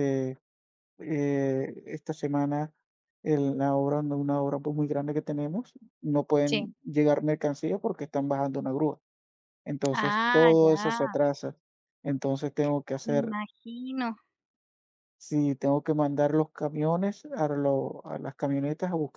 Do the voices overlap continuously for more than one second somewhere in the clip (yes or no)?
yes